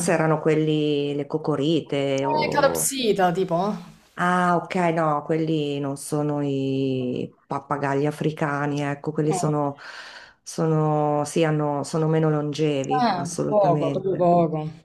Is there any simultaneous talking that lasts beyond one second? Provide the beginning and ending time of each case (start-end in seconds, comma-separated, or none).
12.9-14.3